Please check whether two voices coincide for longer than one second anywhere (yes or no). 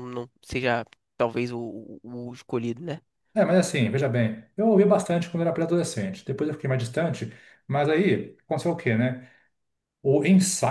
no